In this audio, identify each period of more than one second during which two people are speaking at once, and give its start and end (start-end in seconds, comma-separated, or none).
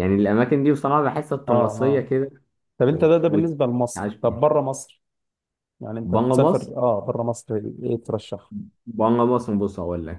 2.8-4.4